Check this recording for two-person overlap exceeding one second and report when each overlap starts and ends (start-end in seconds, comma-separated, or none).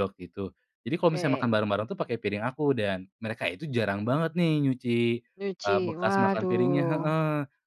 5.6-7.1